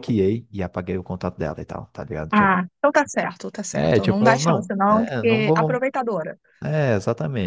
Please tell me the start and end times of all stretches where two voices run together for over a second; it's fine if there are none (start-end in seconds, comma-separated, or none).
3.7-5.8